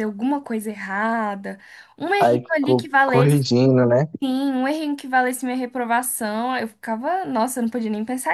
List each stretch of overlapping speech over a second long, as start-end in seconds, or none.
2.2-3.5